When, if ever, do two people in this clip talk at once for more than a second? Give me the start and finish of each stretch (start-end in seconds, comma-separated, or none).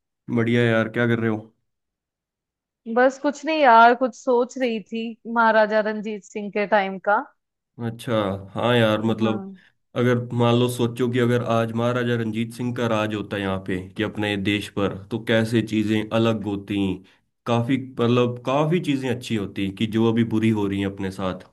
none